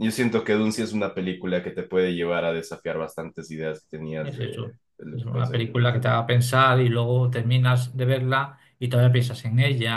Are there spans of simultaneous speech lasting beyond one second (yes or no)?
yes